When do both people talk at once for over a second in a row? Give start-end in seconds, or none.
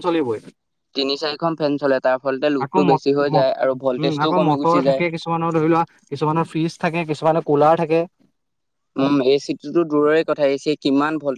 2.7-5.0